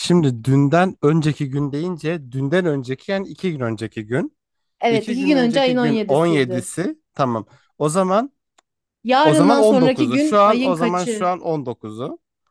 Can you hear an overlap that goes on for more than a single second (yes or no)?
yes